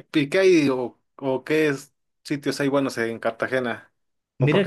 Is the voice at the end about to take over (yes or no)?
yes